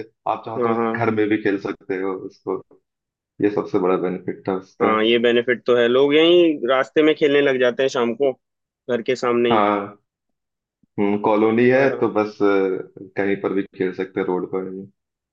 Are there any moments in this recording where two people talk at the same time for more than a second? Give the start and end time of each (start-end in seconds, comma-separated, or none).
none